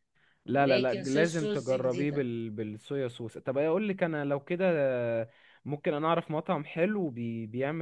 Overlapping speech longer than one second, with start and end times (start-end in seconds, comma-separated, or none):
0.5-2.3